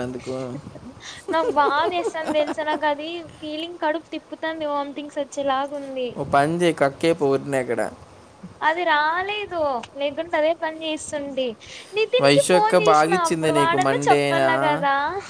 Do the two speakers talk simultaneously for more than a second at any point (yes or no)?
yes